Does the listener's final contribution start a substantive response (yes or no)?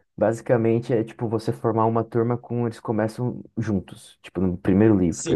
yes